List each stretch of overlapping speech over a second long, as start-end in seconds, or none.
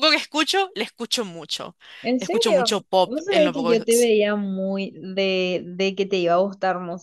2.2-4.1